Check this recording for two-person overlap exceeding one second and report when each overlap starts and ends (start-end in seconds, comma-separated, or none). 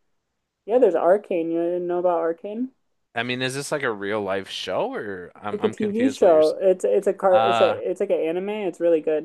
5.3-6.6